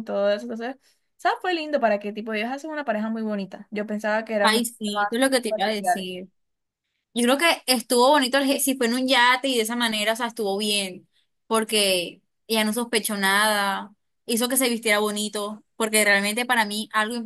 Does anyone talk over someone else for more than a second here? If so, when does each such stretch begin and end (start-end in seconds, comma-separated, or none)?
4.4-6.1